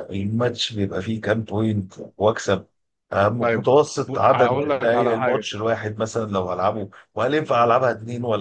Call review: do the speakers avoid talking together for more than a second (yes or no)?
no